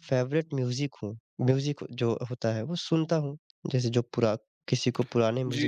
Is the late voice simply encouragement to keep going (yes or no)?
no